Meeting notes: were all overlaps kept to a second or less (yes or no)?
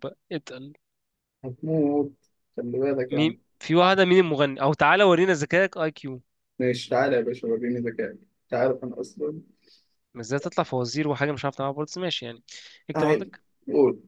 yes